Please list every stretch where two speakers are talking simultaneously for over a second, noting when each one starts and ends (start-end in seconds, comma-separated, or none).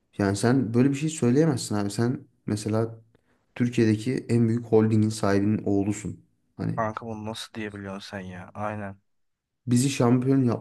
none